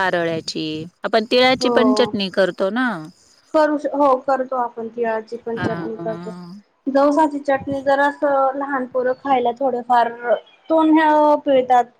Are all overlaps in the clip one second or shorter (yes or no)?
yes